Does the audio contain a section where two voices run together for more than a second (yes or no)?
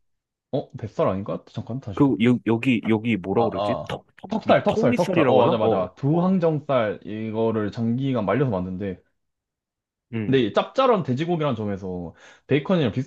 yes